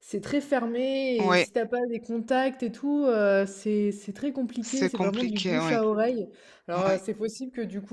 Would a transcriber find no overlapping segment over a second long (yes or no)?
no